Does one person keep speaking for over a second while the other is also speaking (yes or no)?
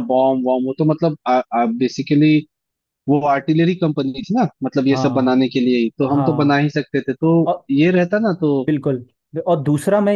no